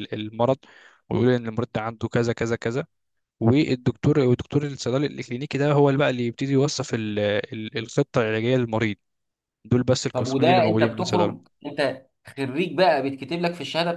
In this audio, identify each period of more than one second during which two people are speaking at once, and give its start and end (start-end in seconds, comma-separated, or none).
10.1-11.5